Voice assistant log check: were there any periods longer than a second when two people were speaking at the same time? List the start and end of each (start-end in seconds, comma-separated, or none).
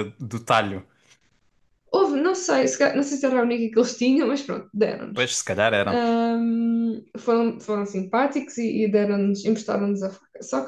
none